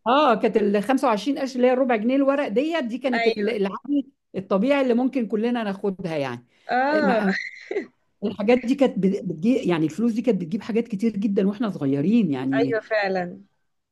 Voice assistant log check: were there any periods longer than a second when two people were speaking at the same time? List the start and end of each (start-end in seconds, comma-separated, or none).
none